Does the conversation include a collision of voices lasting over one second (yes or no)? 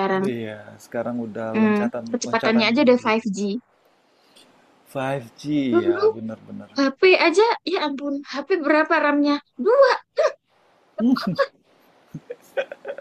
yes